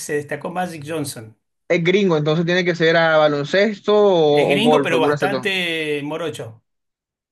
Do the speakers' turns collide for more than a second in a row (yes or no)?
yes